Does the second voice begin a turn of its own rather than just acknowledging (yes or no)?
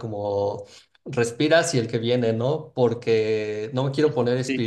no